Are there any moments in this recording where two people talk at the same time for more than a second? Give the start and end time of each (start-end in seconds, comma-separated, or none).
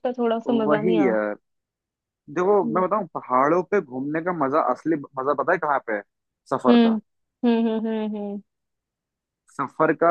none